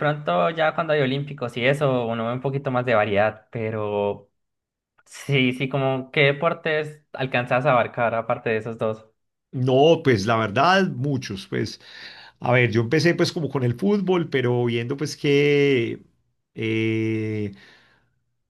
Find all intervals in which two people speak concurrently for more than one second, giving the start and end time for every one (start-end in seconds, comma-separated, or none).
none